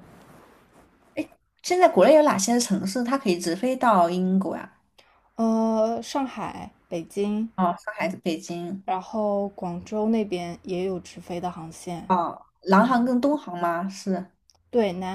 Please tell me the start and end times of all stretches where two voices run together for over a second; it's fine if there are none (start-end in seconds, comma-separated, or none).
none